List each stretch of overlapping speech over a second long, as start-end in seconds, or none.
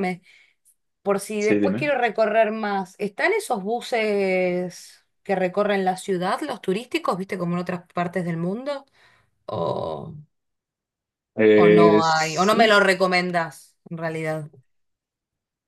11.5-12.8